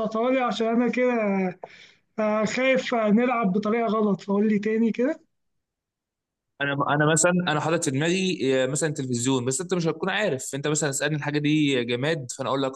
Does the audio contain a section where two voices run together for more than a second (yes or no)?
no